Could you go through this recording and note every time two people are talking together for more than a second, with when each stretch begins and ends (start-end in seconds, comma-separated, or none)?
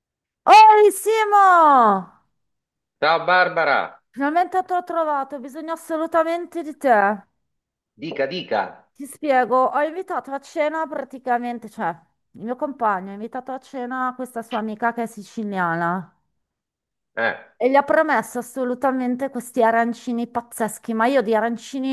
none